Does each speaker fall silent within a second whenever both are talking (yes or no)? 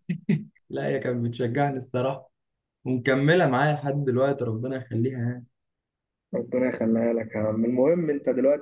yes